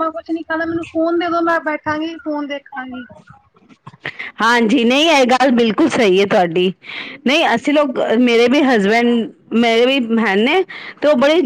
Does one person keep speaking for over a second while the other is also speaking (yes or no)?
no